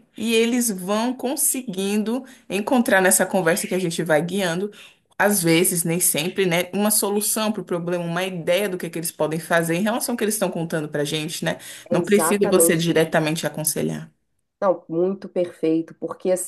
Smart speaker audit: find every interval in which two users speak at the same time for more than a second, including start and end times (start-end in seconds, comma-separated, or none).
11.9-13.1